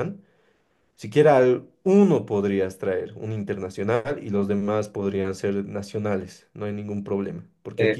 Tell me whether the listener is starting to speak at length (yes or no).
no